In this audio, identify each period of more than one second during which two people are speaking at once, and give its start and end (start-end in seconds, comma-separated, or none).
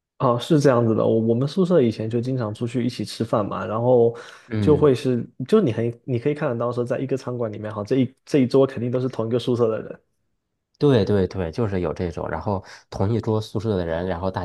none